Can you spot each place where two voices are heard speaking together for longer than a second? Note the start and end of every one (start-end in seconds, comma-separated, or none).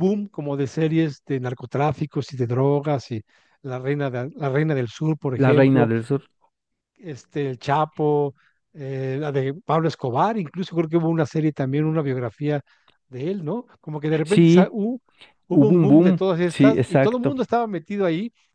15.5-17.3